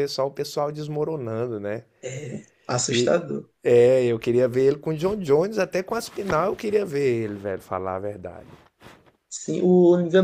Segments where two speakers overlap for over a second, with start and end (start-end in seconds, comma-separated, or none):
none